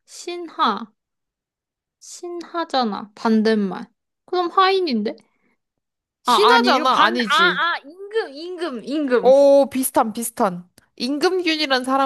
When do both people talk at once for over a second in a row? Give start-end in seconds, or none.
6.3-7.7